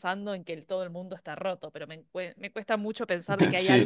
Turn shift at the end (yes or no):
no